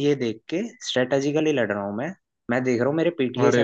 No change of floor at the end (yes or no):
yes